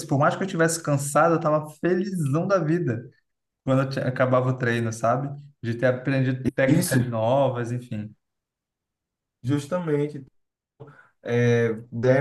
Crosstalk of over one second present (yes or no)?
no